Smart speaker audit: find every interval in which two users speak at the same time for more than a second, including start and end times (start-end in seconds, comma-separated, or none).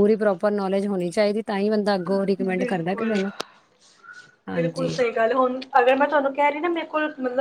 none